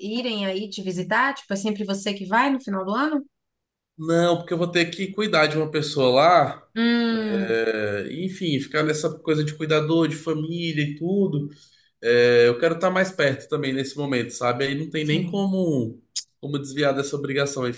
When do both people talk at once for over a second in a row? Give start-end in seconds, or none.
none